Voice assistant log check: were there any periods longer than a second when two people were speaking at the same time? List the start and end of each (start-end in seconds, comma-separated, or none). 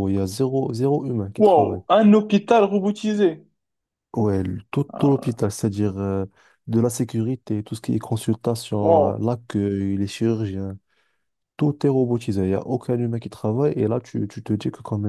none